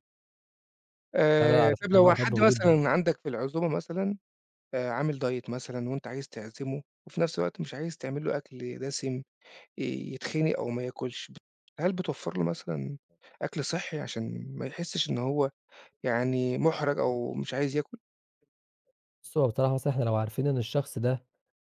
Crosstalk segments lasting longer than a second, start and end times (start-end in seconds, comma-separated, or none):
1.4-2.8